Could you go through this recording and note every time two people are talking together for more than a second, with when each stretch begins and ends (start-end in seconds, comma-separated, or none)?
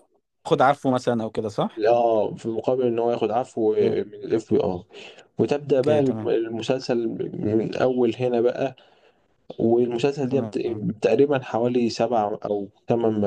none